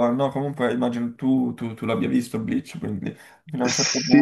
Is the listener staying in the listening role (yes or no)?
no